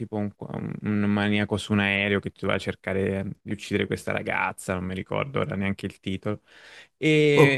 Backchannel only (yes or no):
yes